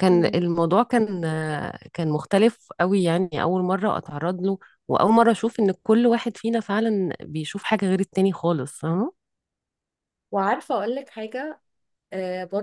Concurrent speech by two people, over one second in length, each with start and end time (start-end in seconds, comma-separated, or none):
none